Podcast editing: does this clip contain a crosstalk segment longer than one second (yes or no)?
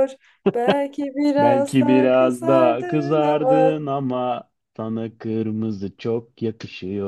yes